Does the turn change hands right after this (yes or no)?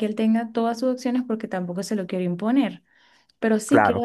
no